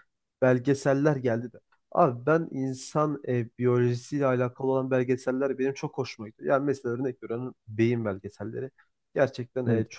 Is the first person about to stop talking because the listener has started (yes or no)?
no